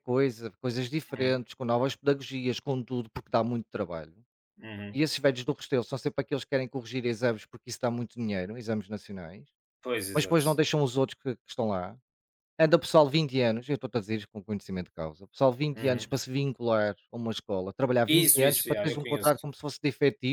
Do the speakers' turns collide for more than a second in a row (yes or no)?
yes